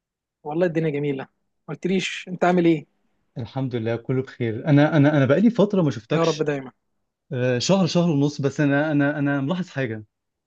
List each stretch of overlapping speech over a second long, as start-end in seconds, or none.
none